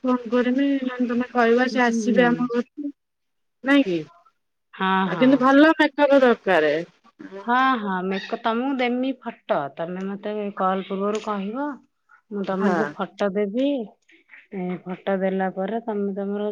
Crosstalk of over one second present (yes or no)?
no